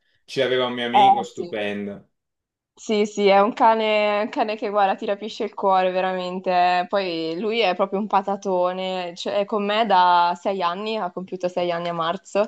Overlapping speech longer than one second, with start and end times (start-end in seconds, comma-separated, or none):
none